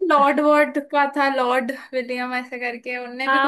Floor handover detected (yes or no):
yes